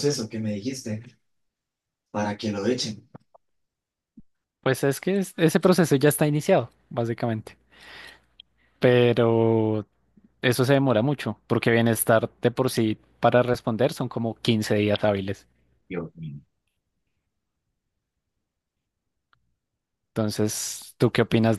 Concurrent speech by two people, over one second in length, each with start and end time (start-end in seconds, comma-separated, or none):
none